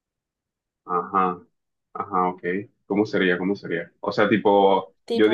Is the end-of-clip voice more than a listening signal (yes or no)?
no